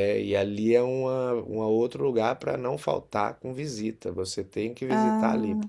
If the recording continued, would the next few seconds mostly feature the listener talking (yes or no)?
no